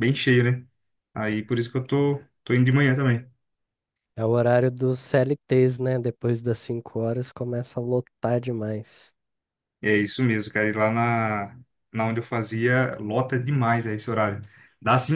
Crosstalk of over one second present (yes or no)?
no